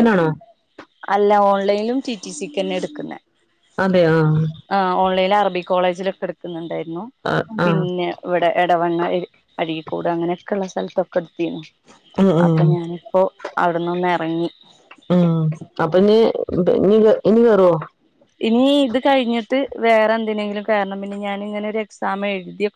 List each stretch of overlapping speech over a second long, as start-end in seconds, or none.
none